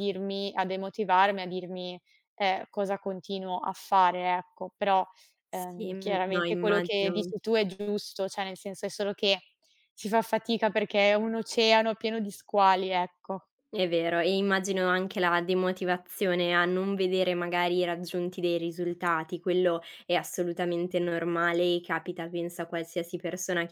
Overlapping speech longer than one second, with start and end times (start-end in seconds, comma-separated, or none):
5.5-7.3